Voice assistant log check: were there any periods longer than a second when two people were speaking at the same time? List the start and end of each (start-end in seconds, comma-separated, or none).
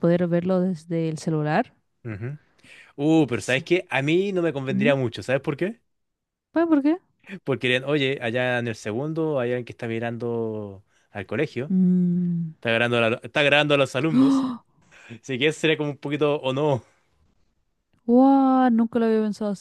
none